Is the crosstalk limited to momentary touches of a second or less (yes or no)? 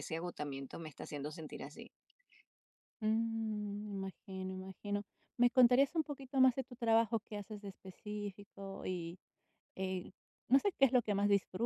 yes